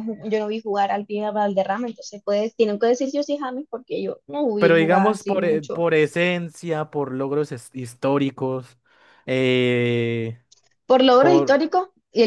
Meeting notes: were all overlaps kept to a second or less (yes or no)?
no